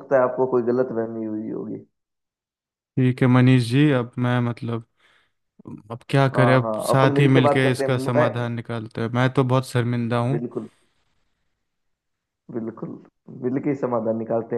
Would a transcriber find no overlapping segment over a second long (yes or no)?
no